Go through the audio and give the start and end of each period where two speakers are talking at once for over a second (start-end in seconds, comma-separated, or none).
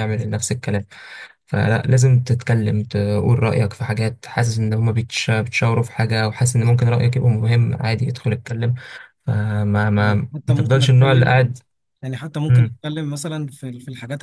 10.0-11.3